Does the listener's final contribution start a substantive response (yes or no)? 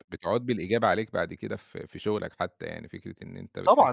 yes